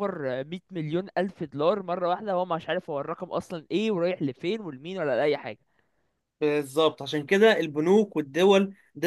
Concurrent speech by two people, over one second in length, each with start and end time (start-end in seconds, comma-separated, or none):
none